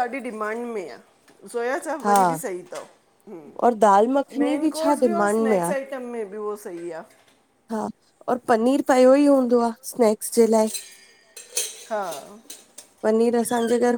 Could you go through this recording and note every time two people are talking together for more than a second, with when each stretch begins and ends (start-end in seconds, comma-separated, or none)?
3.7-5.7